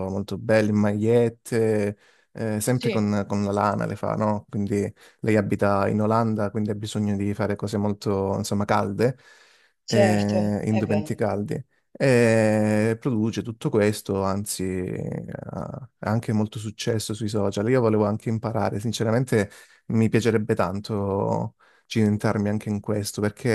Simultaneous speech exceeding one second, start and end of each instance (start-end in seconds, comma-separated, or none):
9.8-11.2